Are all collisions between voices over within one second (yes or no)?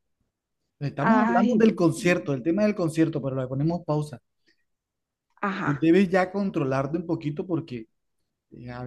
no